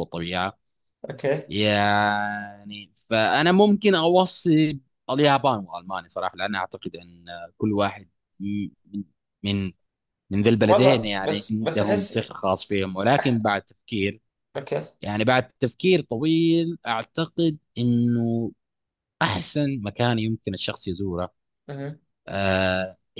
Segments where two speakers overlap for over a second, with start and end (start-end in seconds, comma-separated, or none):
10.6-12.2